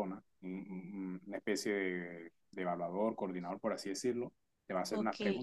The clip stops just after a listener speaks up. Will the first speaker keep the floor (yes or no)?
yes